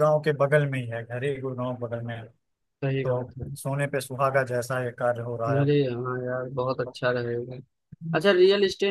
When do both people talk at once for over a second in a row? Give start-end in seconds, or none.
none